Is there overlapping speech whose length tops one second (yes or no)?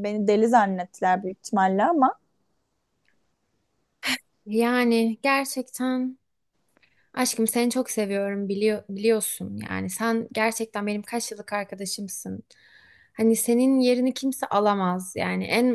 no